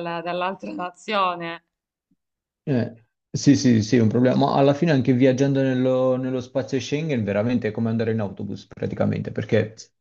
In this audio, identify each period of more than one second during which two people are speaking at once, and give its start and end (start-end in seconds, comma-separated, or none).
none